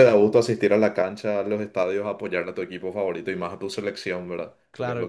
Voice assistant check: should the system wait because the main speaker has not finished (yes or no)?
no